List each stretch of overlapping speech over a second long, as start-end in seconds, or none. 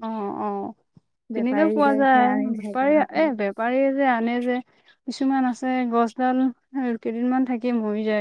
1.4-3.3